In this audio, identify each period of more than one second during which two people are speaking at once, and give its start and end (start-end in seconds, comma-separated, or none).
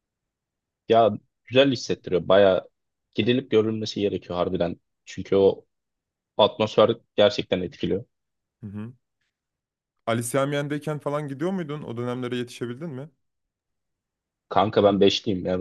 none